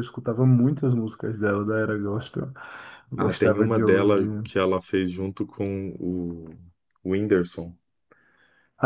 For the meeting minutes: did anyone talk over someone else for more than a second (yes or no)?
yes